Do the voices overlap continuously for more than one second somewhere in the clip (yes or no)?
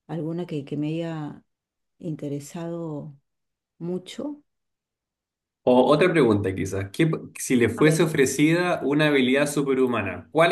no